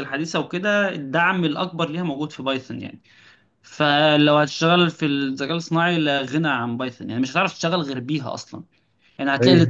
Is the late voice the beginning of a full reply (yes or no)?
no